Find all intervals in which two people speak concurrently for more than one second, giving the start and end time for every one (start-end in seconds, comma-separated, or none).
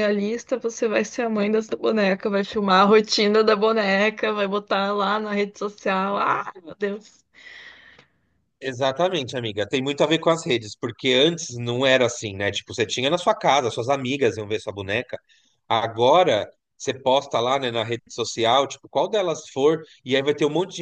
none